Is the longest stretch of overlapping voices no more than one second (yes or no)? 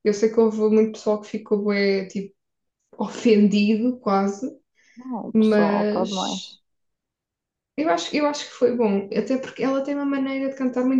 no